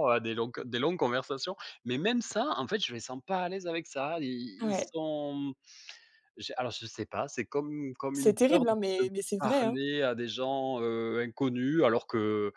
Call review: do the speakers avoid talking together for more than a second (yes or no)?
no